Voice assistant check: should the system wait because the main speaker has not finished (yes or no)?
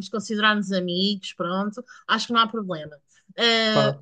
yes